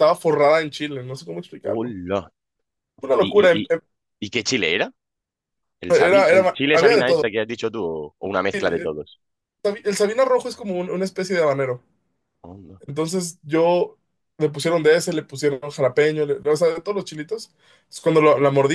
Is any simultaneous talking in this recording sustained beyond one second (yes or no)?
yes